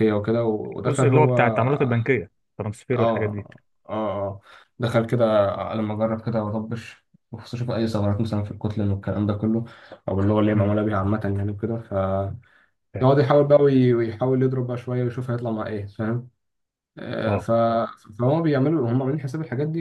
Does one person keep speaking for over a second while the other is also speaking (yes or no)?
no